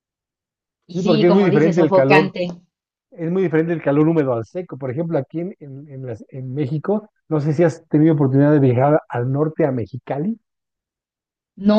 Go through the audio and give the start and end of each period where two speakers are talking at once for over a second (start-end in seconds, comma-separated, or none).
0.9-2.3